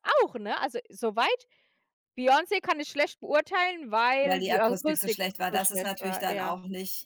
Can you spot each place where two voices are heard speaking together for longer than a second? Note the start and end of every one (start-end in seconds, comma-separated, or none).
4.2-6.5